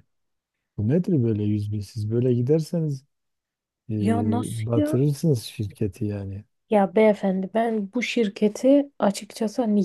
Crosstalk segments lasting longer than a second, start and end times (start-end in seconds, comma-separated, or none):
none